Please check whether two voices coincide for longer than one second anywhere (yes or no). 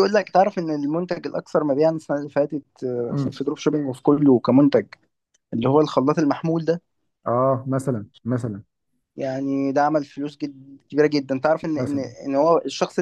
no